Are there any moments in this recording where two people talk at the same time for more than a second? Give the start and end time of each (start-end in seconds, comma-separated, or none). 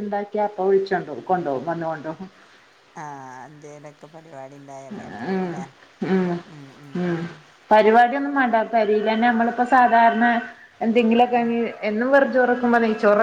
none